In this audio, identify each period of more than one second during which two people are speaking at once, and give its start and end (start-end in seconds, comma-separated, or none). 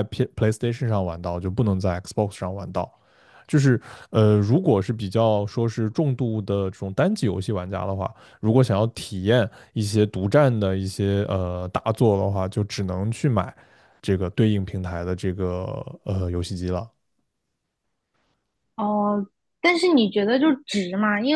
none